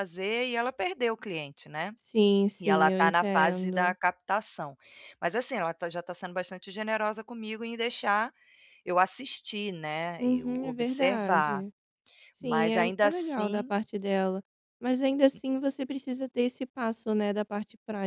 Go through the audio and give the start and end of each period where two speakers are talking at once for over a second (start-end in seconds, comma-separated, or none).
2.6-4.0, 10.2-11.7, 12.4-13.7